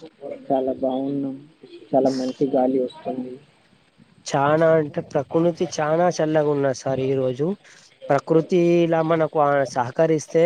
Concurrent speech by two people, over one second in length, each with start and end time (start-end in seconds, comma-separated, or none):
none